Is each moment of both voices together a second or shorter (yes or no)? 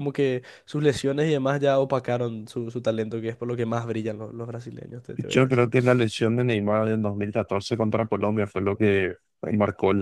yes